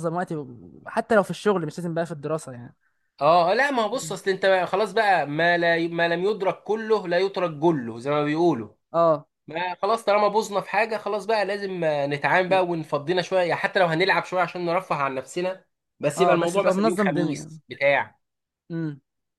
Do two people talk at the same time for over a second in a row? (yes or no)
yes